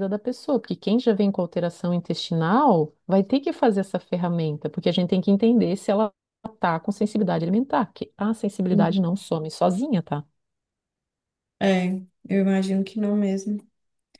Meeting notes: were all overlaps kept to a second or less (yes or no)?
yes